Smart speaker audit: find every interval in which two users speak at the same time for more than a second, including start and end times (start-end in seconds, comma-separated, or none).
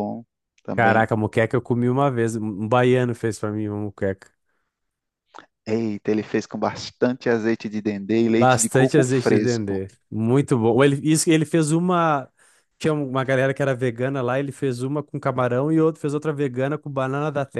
8.4-9.8